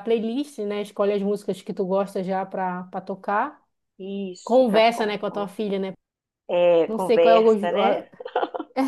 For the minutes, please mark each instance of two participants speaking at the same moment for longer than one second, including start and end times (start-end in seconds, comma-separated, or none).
6.9-8.1